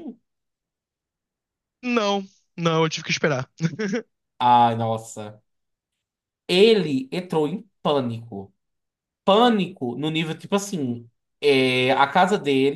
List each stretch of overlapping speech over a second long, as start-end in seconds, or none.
none